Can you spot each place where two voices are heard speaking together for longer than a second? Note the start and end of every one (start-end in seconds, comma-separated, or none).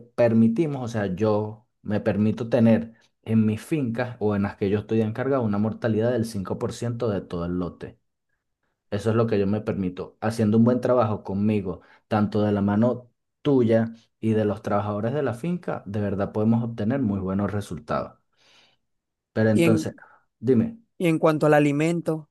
none